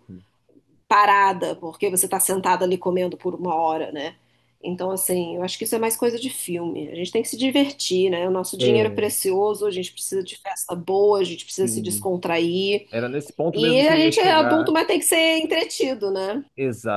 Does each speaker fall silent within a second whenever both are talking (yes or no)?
no